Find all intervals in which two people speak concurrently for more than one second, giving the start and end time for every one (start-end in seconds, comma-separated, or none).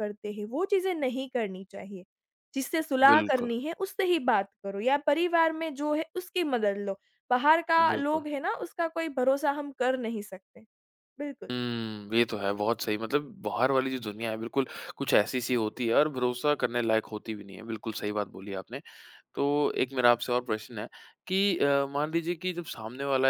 none